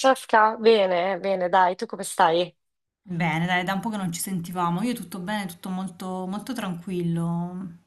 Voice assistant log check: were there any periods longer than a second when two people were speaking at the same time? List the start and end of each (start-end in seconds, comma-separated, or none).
none